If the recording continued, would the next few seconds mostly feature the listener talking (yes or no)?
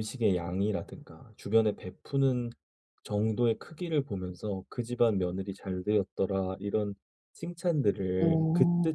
no